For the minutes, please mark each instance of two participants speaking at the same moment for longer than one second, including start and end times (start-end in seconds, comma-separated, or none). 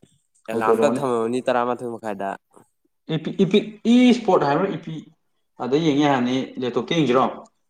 none